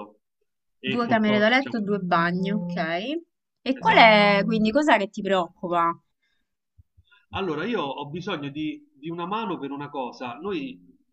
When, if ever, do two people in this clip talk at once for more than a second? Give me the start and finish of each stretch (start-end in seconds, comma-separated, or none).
0.8-2.8